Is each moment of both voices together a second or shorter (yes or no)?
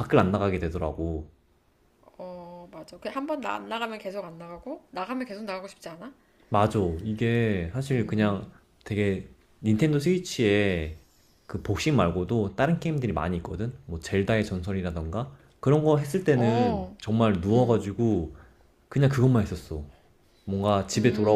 yes